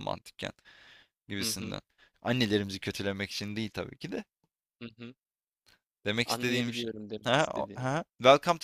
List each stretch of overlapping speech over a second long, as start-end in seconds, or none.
6.2-7.9